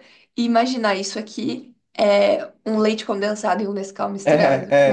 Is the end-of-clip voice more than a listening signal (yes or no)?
yes